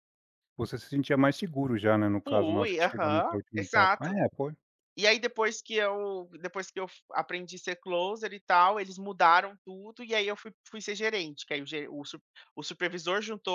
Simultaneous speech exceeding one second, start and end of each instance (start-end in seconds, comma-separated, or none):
2.3-4.2